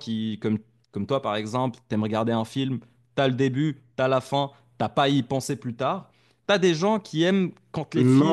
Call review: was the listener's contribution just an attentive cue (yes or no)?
no